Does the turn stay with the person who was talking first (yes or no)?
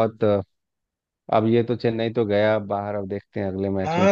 no